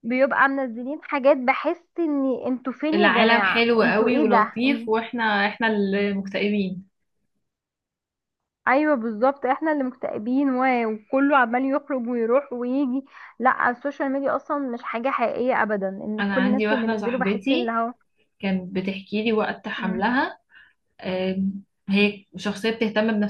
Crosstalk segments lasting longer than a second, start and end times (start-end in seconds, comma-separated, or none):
2.9-4.9, 16.2-17.8